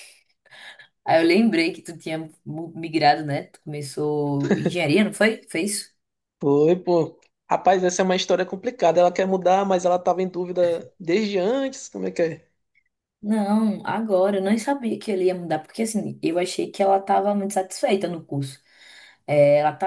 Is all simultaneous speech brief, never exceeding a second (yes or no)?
yes